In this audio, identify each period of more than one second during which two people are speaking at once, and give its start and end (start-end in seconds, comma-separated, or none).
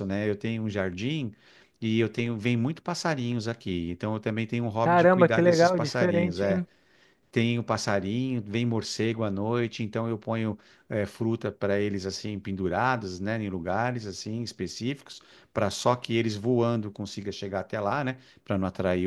4.8-6.6